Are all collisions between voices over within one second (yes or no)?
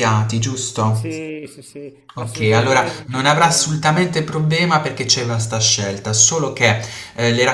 no